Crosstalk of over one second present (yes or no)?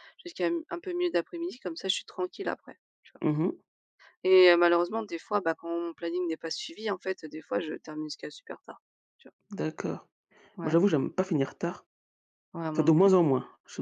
no